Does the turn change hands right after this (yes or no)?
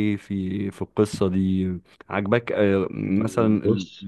no